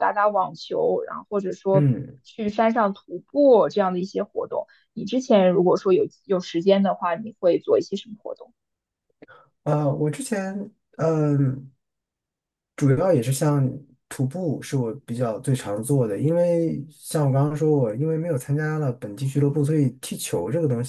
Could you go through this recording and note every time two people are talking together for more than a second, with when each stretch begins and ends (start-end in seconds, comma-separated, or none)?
none